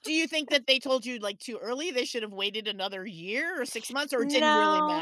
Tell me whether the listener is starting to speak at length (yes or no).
yes